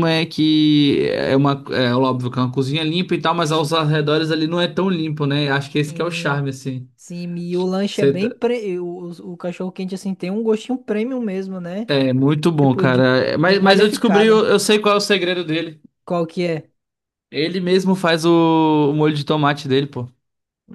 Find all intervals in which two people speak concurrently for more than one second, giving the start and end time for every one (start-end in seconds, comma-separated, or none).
12.6-14.4